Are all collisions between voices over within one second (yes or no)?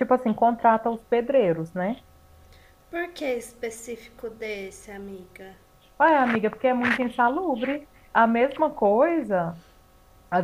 yes